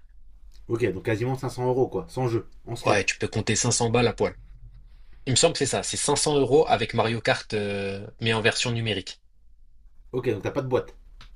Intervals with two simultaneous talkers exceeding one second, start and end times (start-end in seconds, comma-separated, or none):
none